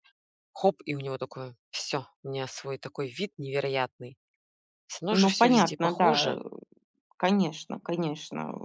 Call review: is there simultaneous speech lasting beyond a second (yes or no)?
yes